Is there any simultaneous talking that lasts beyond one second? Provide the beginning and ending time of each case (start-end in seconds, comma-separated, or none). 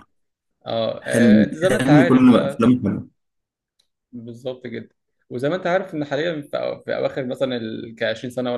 1.0-2.6